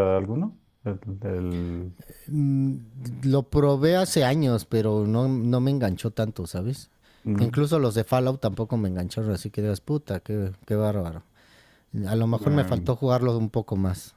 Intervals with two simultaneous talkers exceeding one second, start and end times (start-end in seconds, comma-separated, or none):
none